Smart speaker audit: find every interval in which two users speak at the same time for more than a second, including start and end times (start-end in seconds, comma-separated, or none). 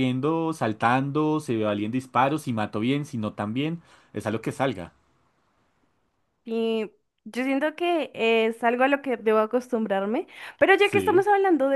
none